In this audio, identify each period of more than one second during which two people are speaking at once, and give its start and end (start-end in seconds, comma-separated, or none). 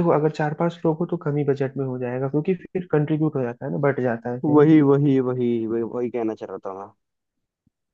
none